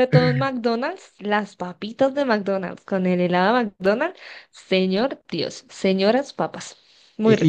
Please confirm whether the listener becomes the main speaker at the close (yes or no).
yes